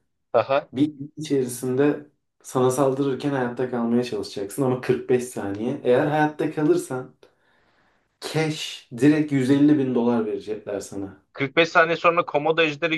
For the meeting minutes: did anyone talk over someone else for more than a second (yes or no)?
no